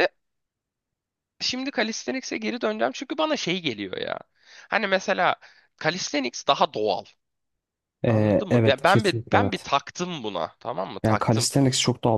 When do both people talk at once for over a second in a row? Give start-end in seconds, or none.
8.1-9.7